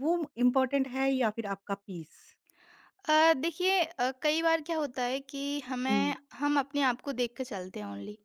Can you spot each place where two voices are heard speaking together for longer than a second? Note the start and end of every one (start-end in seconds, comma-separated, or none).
none